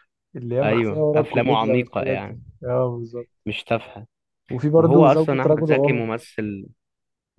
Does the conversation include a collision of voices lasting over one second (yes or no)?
yes